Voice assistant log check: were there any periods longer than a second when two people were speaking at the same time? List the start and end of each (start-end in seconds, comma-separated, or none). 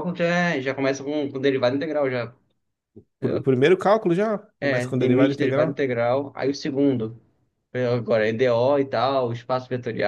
4.6-5.8